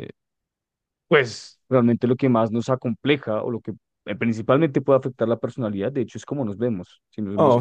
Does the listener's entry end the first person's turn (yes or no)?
yes